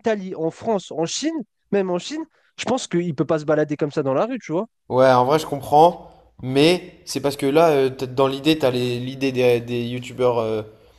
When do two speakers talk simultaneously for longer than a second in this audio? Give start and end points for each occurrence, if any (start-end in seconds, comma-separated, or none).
none